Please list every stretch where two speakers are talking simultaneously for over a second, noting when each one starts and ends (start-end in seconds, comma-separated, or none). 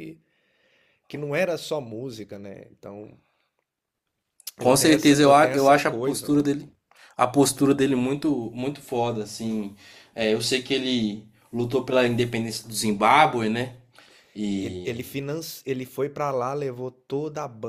4.6-6.3